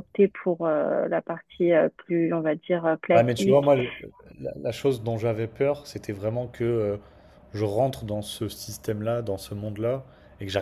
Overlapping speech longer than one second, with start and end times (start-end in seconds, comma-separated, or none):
none